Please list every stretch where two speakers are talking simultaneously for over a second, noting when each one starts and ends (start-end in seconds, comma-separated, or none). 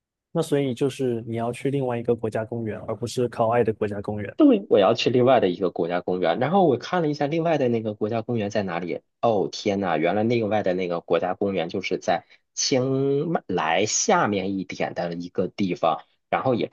none